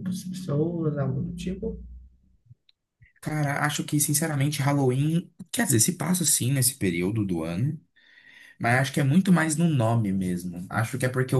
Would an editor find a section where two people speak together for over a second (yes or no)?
no